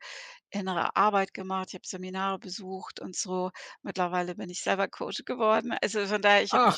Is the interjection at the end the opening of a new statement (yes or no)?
no